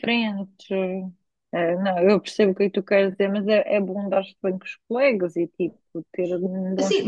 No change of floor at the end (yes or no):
no